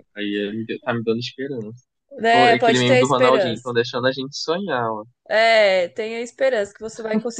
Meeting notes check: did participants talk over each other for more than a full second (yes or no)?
yes